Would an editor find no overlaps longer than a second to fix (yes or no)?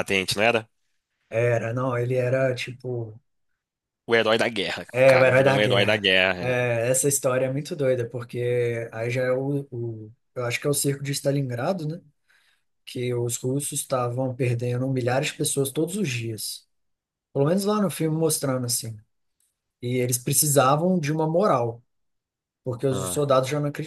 no